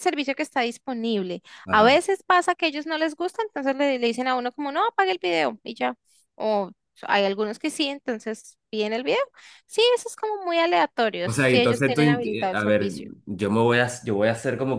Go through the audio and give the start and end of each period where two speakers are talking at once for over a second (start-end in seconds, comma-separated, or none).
11.2-13.1